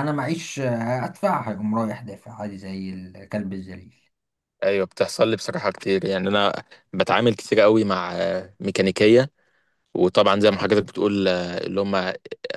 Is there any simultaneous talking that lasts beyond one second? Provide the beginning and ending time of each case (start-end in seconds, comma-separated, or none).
none